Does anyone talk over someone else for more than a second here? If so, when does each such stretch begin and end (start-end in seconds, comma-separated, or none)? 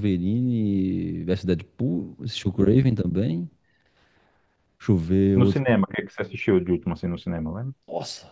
none